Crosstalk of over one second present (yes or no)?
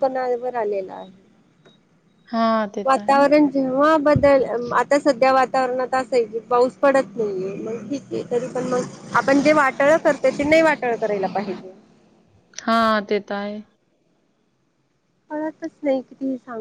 no